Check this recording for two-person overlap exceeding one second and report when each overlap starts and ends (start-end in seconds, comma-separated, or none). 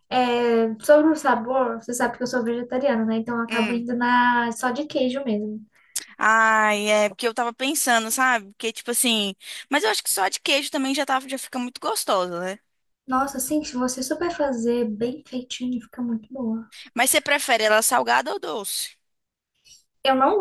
none